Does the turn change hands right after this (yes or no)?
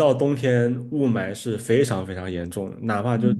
no